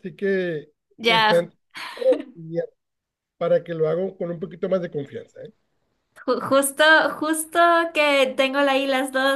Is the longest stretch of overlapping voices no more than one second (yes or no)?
yes